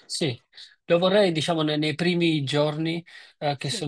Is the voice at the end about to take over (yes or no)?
no